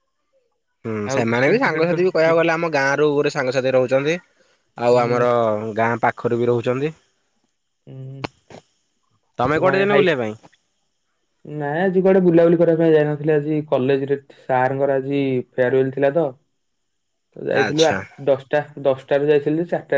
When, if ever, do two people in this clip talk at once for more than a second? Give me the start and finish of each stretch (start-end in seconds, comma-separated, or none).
1.1-2.4